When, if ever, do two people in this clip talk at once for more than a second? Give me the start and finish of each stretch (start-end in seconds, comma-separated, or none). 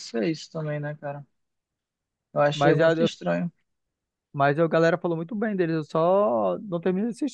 none